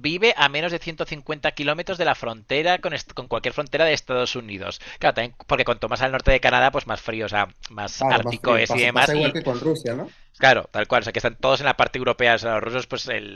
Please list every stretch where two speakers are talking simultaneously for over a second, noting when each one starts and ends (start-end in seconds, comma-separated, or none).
8.0-9.4